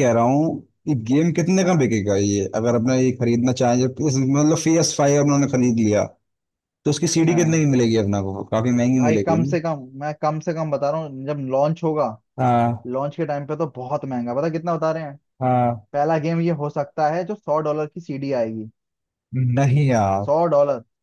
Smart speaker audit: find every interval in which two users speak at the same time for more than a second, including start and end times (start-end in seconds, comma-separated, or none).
none